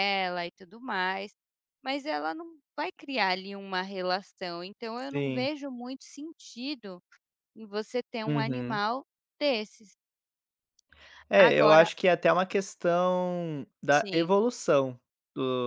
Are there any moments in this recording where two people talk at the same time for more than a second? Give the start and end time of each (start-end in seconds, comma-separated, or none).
none